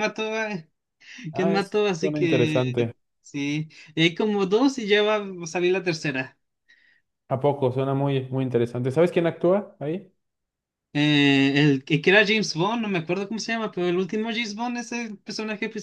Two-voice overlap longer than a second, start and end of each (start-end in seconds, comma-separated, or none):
1.3-2.9